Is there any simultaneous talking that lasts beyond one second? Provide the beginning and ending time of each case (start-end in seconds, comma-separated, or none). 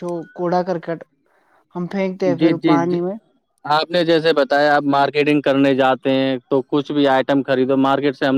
none